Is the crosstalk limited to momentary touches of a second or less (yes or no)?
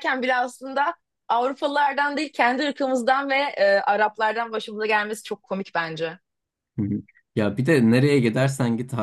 yes